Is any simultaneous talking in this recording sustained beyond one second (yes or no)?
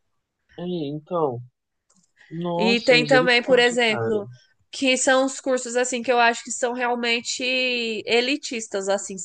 yes